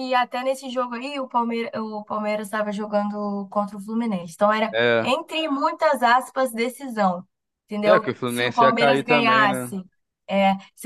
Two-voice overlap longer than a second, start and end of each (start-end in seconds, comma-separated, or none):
7.9-9.7